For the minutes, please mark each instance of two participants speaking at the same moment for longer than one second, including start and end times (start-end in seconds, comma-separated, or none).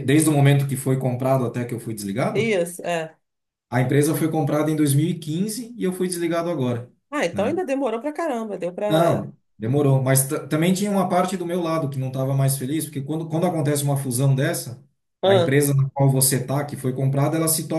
none